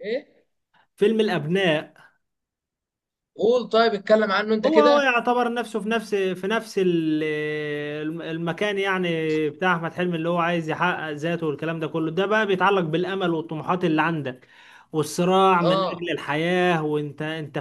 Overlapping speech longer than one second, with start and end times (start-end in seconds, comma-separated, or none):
none